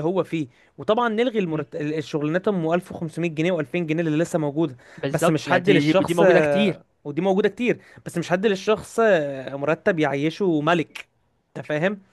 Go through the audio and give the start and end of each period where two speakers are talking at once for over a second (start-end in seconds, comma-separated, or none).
5.0-6.8